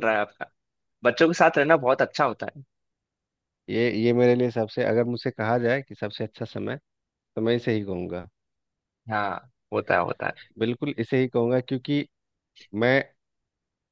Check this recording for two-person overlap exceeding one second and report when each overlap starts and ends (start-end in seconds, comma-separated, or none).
none